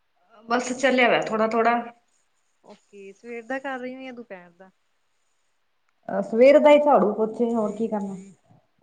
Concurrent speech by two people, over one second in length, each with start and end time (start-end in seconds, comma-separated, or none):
none